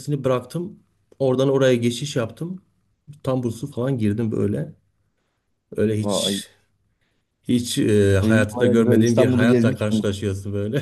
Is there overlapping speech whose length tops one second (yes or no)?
yes